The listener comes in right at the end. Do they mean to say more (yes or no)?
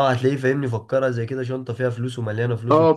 yes